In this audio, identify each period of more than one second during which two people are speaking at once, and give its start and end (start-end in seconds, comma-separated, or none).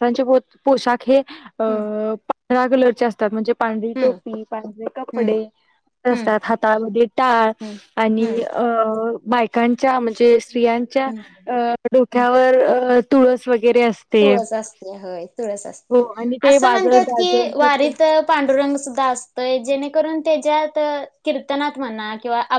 16.2-17.9